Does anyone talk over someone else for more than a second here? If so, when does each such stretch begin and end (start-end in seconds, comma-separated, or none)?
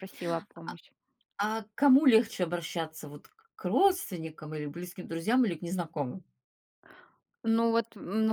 none